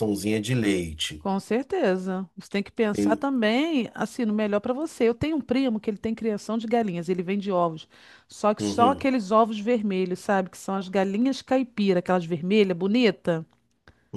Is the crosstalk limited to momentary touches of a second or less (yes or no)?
yes